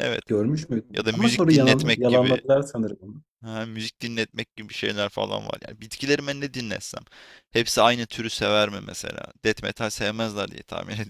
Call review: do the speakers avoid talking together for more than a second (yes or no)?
no